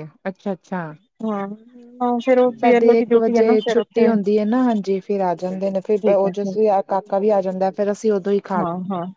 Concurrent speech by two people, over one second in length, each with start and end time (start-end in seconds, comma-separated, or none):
2.6-4.0